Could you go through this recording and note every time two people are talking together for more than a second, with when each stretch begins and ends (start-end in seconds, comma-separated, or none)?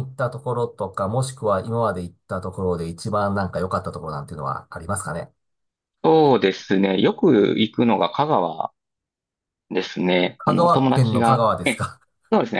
10.4-11.8